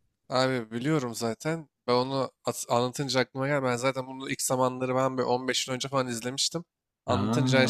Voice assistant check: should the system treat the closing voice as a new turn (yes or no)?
no